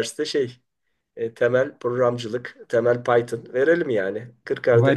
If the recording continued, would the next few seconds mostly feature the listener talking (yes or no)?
yes